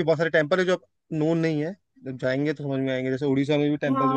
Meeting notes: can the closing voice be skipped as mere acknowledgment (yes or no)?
no